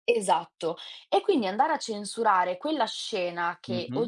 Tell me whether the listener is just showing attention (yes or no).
yes